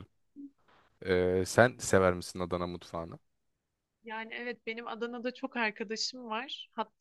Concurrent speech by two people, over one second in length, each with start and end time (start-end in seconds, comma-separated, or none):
none